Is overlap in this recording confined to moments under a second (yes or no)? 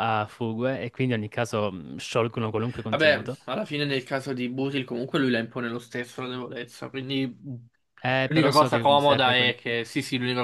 no